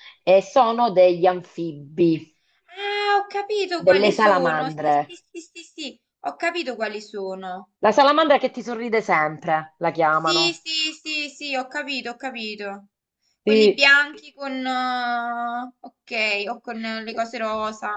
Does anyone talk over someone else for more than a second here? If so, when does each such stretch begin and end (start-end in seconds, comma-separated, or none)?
3.9-5.2